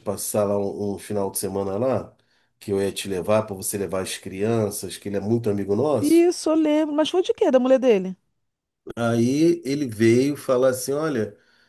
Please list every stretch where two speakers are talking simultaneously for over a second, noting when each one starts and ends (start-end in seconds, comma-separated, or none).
none